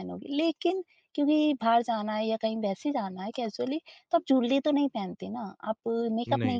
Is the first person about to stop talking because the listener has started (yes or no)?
no